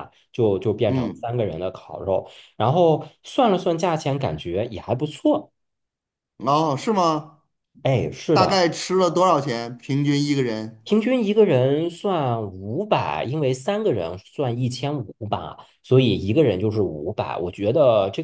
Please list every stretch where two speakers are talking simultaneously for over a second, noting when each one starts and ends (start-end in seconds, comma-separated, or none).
none